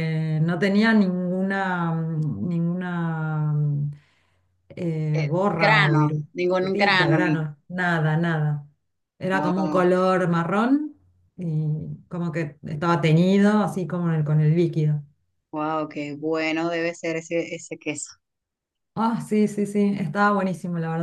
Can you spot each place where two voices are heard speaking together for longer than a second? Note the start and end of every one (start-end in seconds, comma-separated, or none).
5.1-7.4